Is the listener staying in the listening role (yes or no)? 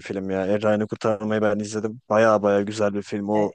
yes